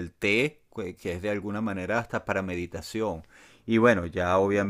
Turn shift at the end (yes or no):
no